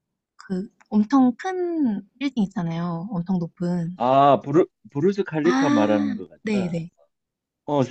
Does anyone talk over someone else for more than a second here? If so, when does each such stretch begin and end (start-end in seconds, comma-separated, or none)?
5.4-6.8